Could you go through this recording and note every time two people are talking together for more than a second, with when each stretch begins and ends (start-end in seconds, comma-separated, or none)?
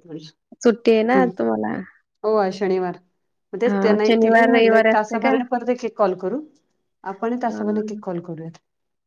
3.7-5.3